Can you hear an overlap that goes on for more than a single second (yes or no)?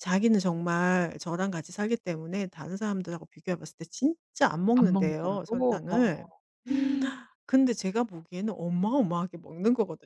yes